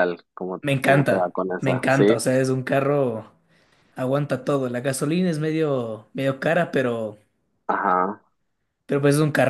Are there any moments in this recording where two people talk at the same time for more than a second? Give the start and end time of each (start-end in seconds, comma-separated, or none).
0.6-2.2